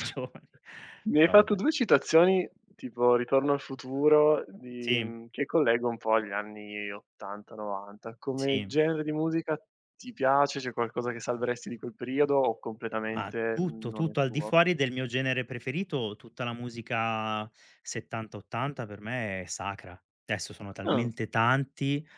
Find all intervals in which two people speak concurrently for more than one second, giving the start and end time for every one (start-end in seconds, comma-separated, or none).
13.1-14.6